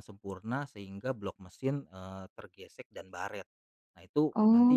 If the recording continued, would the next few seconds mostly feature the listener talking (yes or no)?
no